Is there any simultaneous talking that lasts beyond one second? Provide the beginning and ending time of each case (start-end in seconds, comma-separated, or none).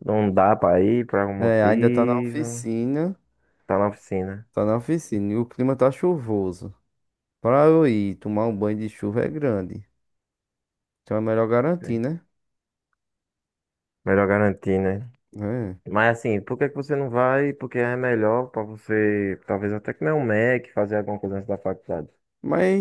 1.4-2.6